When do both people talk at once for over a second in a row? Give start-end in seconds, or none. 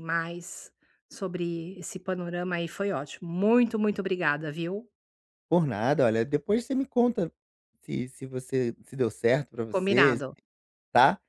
none